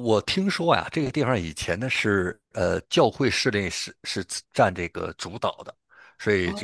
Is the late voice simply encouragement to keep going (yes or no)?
yes